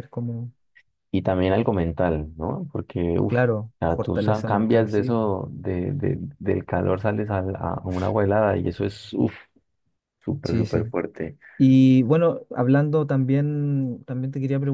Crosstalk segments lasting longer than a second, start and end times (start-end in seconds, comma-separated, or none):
4.0-5.3